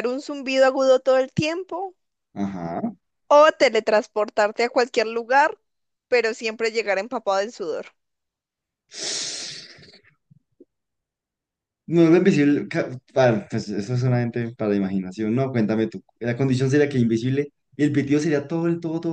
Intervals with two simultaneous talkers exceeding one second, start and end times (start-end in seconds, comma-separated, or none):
none